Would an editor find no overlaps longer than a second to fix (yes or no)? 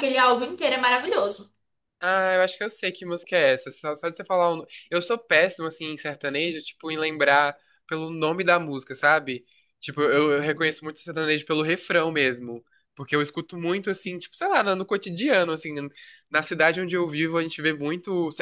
yes